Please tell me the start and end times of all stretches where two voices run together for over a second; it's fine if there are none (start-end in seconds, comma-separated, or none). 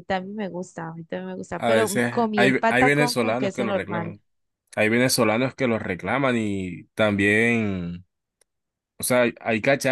1.5-4.2